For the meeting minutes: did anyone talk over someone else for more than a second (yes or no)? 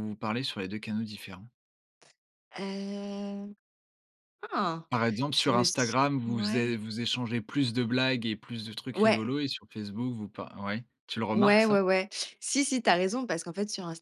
yes